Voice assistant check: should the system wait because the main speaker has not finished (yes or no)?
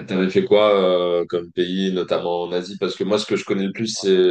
yes